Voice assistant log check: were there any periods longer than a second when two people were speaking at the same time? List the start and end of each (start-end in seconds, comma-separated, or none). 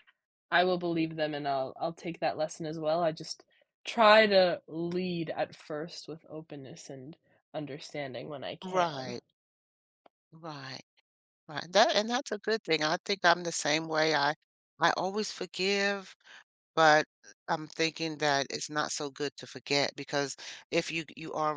none